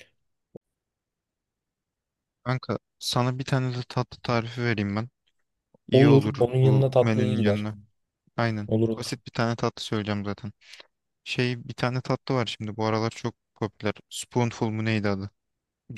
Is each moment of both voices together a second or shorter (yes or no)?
no